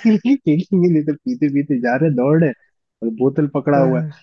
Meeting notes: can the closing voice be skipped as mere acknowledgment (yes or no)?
yes